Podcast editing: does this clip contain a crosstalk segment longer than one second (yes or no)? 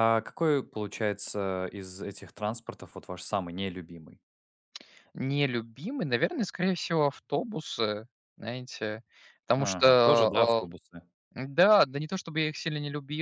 no